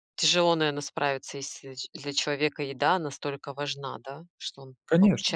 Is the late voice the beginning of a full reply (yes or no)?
yes